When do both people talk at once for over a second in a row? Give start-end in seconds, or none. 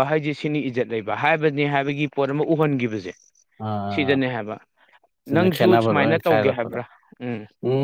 5.3-6.8